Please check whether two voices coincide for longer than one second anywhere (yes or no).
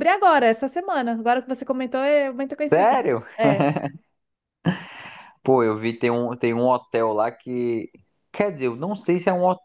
no